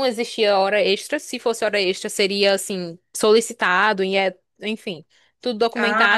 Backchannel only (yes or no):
yes